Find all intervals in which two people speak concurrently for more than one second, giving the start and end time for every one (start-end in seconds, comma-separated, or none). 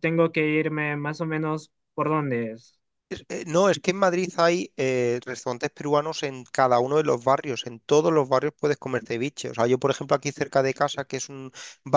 none